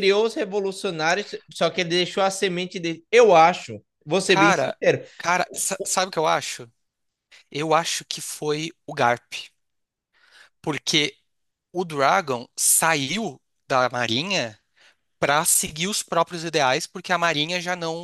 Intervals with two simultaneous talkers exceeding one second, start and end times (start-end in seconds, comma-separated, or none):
none